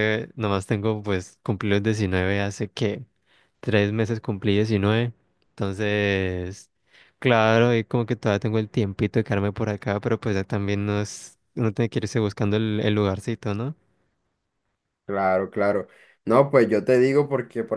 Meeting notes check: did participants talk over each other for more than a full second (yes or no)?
no